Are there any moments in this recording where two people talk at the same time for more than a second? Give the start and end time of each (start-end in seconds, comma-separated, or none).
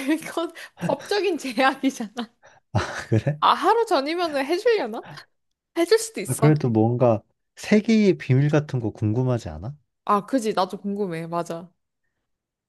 none